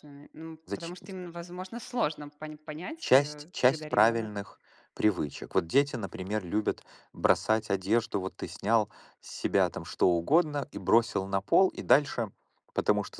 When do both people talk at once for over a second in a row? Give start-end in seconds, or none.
3.0-4.4